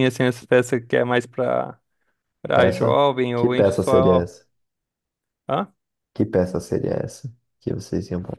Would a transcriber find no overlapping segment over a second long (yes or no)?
no